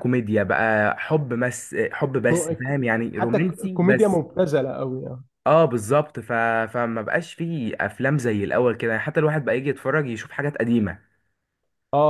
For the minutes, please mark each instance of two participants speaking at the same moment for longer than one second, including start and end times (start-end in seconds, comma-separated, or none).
2.3-4.2